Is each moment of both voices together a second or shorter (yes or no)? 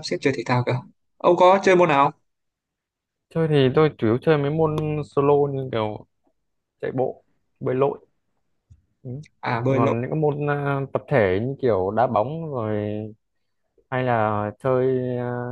yes